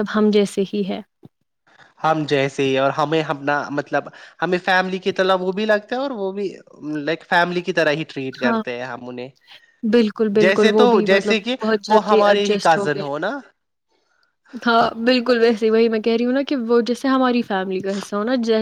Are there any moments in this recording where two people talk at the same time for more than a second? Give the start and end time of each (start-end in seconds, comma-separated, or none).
10.4-13.0